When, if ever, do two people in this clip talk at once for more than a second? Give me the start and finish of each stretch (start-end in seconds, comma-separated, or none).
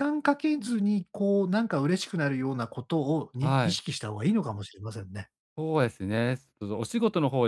none